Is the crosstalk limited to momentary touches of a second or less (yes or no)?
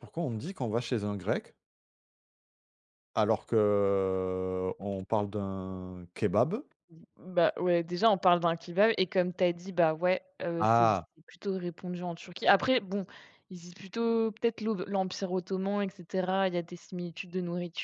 yes